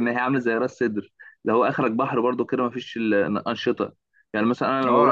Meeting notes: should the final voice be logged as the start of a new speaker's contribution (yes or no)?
yes